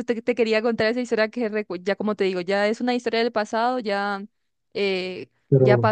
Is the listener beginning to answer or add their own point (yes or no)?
no